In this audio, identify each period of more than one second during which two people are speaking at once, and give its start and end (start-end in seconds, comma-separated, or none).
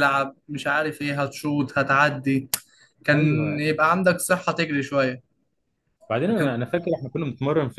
none